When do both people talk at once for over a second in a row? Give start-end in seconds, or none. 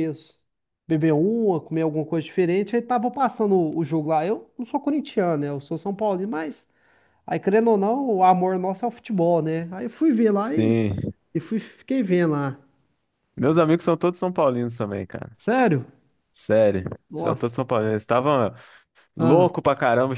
none